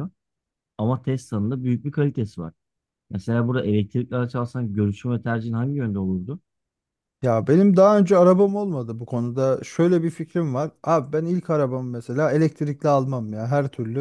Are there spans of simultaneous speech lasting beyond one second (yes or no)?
no